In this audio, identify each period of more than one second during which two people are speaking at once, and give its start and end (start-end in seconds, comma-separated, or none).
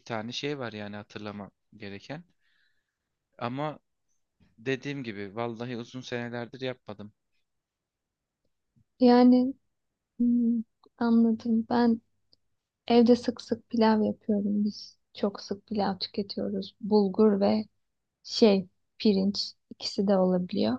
none